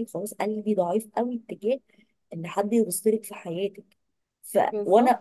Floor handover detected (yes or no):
no